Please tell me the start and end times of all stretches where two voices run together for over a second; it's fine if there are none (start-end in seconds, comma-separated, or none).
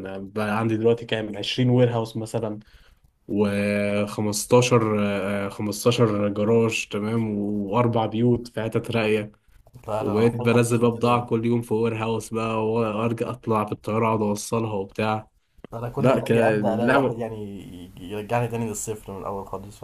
10.0-11.3, 16.0-17.2